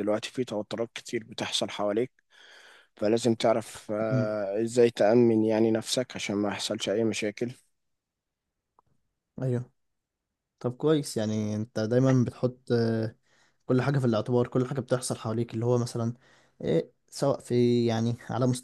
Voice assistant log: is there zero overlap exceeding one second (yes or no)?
yes